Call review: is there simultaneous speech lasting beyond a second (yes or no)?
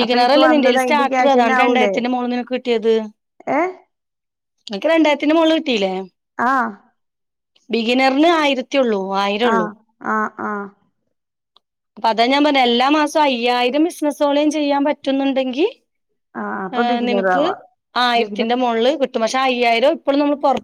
no